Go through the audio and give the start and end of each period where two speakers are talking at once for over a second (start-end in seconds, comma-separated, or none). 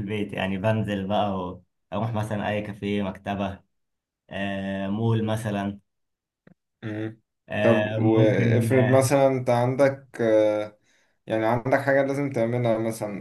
7.6-9.1